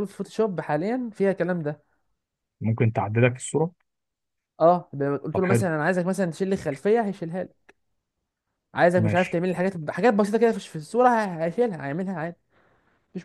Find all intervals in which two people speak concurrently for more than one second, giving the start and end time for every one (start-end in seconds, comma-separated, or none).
none